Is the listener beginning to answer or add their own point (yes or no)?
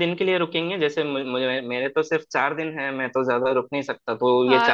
yes